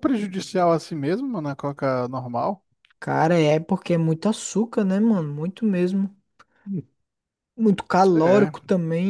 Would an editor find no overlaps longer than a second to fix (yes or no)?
yes